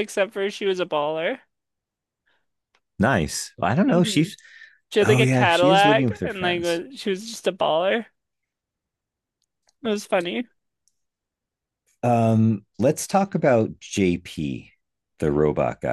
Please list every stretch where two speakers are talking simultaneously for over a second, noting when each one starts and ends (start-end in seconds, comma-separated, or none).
5.0-6.8